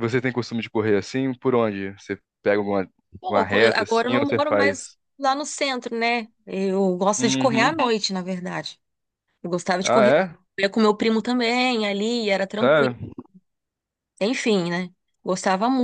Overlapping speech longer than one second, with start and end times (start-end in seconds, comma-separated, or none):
3.3-5.0